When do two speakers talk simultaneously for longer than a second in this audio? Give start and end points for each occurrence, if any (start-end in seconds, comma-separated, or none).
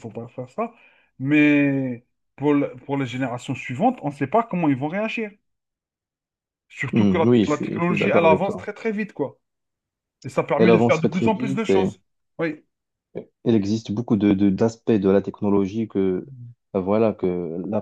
6.9-8.7, 10.6-11.9